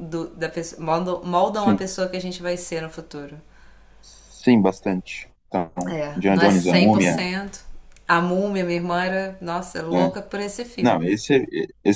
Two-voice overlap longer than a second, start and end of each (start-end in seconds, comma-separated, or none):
5.8-7.2